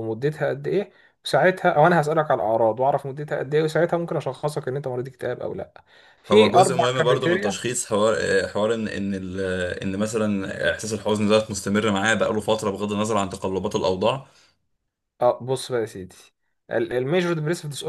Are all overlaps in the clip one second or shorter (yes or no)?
no